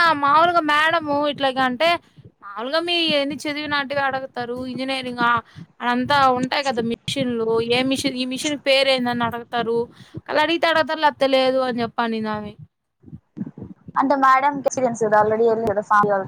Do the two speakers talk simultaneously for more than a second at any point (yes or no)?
no